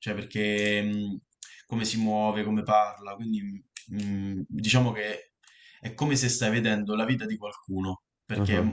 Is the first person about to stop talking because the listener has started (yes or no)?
no